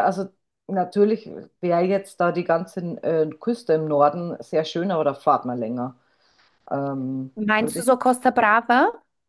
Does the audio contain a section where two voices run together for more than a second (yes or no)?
no